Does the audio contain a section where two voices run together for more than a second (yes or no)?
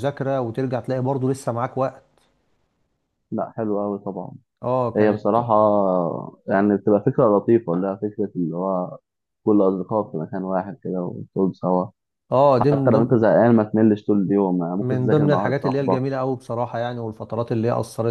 yes